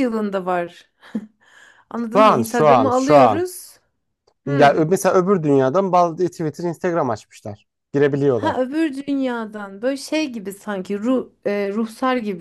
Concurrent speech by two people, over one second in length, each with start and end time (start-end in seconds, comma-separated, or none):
2.1-3.5